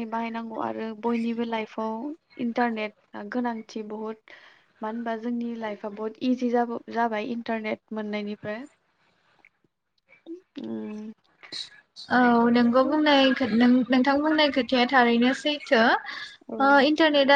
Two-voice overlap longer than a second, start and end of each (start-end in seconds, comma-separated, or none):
none